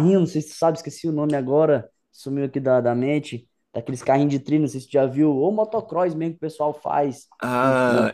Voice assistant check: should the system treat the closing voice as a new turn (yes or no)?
yes